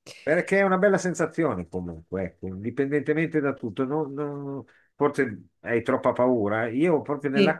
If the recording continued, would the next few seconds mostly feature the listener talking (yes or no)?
no